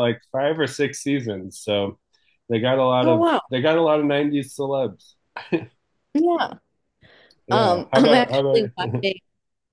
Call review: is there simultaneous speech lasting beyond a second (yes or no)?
yes